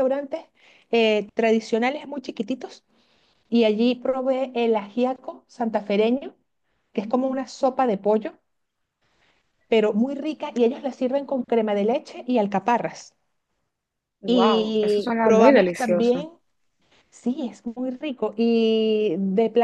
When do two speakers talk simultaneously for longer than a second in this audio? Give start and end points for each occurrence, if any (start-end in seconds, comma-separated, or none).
14.3-16.3